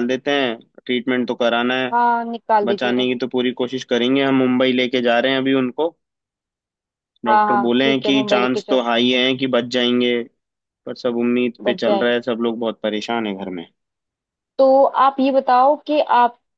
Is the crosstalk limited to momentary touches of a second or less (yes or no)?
no